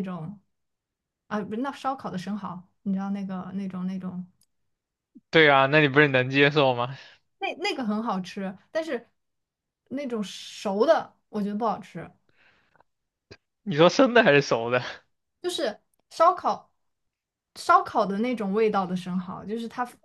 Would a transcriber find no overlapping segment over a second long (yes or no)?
yes